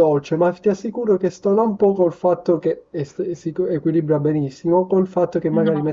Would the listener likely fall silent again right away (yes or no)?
yes